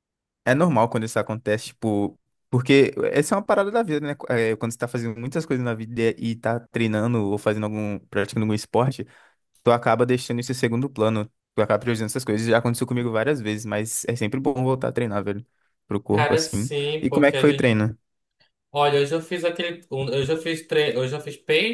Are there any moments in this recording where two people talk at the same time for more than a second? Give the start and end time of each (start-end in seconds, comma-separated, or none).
16.1-17.7